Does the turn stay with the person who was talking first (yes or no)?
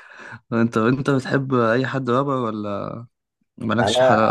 no